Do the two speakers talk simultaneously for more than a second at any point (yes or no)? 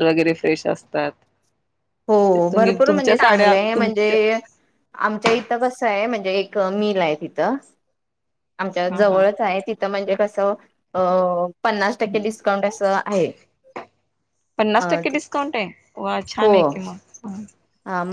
yes